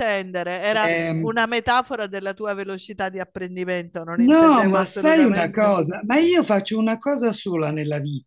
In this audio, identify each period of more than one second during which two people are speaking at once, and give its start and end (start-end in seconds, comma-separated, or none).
4.2-5.7